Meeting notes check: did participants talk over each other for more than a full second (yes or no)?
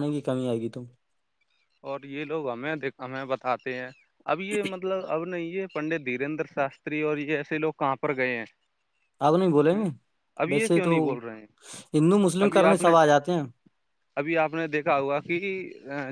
no